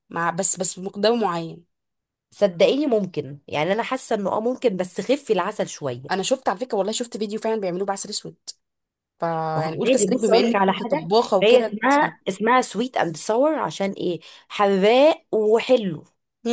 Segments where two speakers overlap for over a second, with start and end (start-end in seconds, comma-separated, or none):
9.9-11.8